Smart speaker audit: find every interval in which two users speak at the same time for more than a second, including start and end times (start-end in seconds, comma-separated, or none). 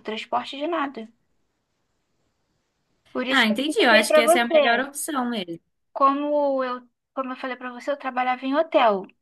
3.3-4.9